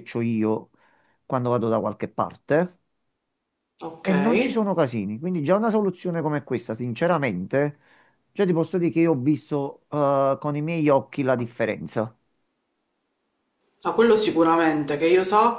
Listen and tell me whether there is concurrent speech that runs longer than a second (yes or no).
no